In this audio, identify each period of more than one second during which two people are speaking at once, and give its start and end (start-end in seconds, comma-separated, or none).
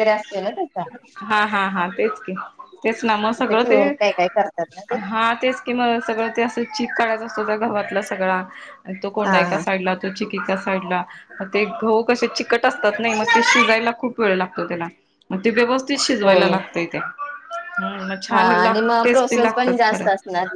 18.3-20.1